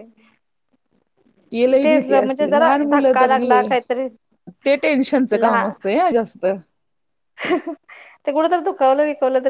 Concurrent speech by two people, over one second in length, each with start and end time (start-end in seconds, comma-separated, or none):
2.2-3.9